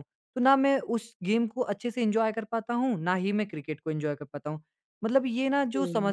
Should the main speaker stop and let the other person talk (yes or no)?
no